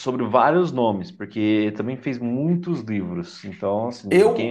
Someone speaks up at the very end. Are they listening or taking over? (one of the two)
taking over